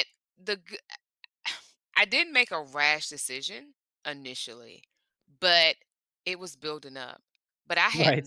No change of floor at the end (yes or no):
yes